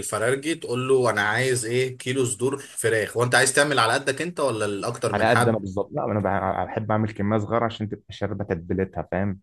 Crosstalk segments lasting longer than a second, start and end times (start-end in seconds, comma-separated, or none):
none